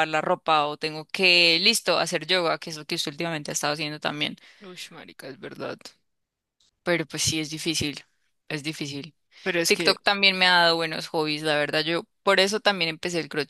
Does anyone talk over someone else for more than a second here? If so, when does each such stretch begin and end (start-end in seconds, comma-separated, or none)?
none